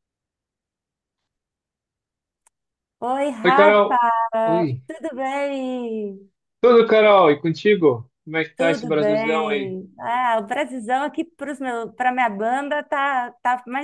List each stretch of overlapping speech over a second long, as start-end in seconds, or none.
8.6-9.8